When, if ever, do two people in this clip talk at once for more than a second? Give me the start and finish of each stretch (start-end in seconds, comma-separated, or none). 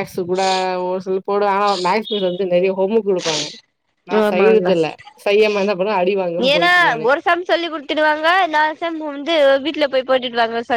none